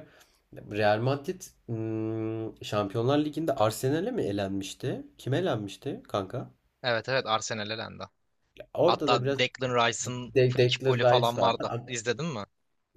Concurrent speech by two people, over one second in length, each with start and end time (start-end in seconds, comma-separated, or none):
10.3-11.8